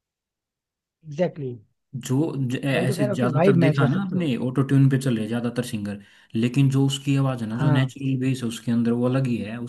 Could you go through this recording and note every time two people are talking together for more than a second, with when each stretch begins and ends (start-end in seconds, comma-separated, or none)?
2.7-4.2